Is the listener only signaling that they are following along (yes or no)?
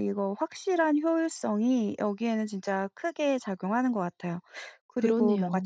yes